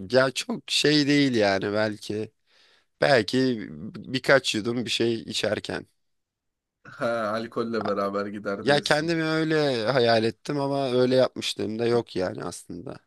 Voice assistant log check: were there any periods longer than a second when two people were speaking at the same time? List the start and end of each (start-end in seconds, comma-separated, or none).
none